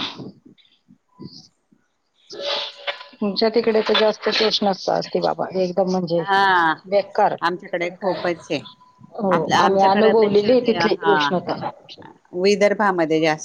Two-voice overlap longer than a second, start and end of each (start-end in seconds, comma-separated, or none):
9.3-11.1